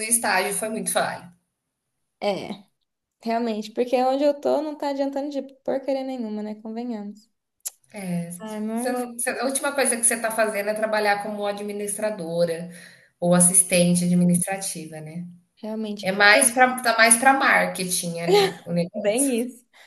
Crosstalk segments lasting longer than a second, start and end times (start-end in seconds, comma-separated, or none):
none